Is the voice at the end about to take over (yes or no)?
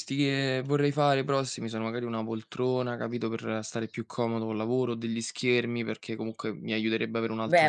yes